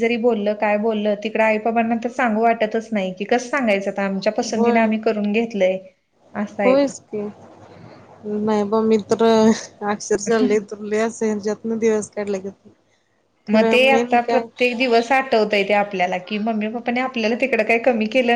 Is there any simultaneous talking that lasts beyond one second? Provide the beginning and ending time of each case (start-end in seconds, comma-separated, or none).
none